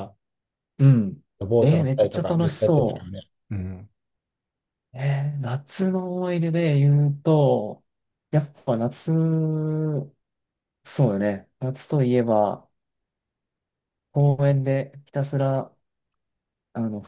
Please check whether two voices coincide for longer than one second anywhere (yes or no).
yes